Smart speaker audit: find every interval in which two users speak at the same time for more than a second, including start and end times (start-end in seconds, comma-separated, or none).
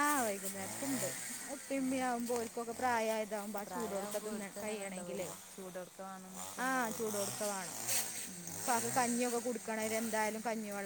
3.6-5.3